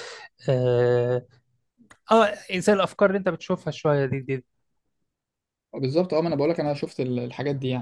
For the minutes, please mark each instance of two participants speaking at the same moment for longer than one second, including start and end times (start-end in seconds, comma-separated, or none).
none